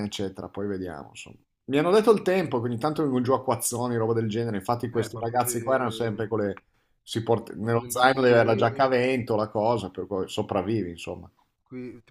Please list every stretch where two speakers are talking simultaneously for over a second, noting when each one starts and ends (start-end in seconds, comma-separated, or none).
7.6-8.9